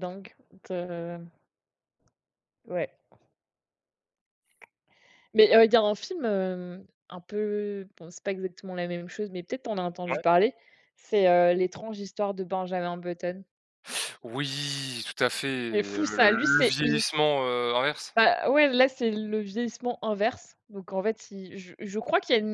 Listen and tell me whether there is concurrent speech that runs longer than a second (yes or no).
yes